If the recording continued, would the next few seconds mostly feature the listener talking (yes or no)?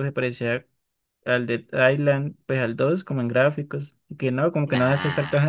no